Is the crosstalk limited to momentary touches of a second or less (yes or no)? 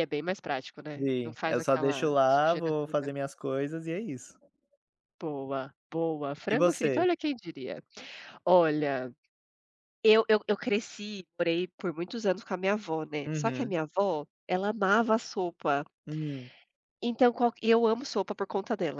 no